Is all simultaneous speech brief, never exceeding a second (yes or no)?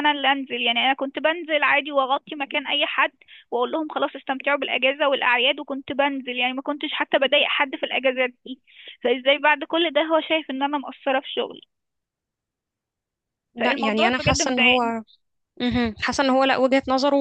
no